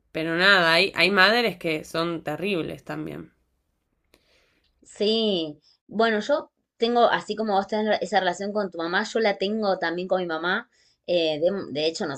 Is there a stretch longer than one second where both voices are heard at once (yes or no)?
no